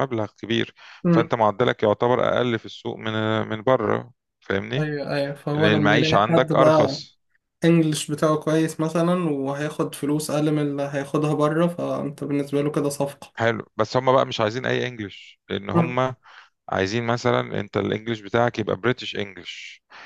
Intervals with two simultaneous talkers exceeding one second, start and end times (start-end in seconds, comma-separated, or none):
5.5-7.0